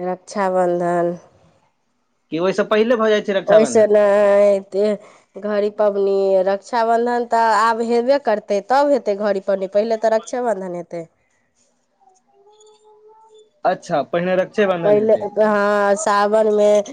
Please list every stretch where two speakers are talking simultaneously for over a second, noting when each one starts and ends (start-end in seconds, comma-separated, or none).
none